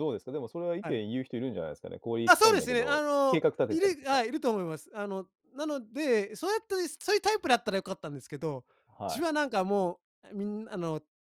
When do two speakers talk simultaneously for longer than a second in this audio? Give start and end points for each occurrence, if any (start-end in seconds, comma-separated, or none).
2.3-4.2